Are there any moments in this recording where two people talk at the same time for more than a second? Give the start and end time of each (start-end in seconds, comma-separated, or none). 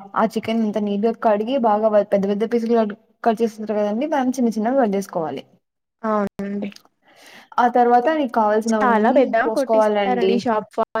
8.7-10.3